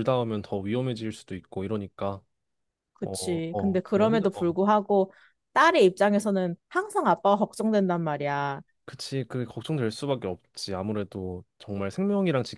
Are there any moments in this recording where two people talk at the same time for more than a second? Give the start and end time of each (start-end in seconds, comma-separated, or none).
3.0-4.6